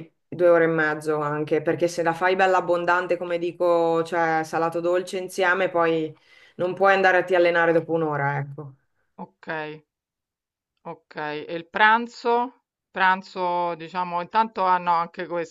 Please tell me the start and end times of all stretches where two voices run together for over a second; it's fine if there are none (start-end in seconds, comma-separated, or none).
none